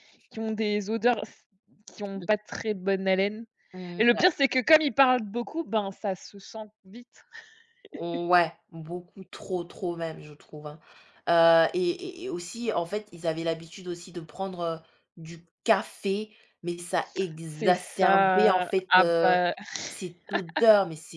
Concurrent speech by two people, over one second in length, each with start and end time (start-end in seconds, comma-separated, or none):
17.5-19.3